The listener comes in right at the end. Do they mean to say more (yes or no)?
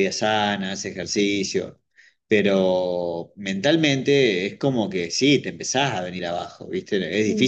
no